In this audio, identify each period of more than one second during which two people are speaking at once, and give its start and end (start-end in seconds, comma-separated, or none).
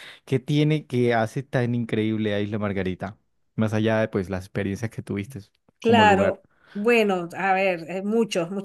none